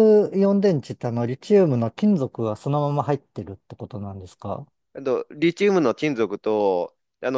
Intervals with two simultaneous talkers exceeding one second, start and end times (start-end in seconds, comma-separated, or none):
none